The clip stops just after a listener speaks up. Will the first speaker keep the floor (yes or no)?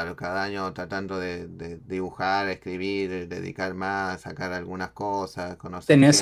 no